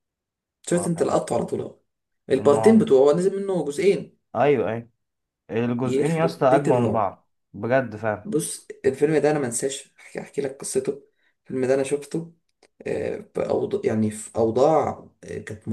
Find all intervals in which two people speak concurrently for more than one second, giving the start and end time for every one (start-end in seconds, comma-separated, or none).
5.8-7.1